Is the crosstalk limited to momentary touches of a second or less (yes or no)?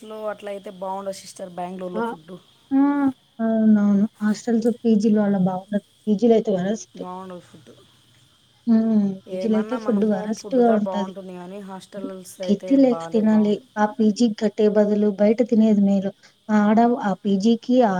no